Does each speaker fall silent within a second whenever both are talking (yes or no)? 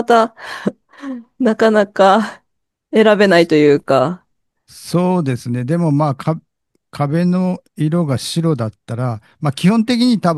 yes